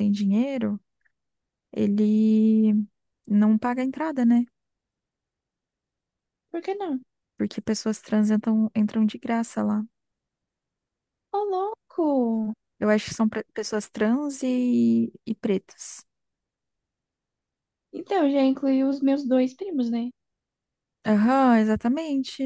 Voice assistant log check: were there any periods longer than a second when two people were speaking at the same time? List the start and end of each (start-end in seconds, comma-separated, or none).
none